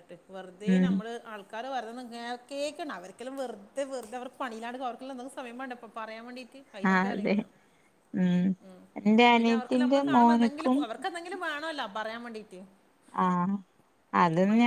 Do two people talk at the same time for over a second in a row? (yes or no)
yes